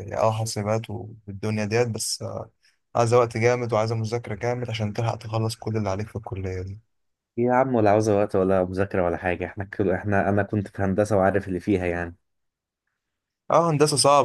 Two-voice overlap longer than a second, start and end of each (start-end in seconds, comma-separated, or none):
none